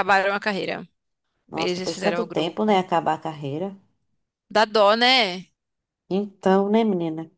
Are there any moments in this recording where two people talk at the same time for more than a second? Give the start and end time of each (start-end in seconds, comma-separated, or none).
1.5-2.8